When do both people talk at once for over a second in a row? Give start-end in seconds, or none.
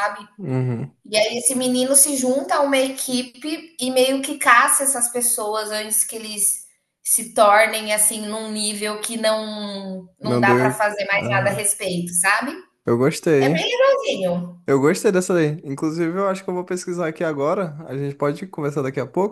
10.2-11.7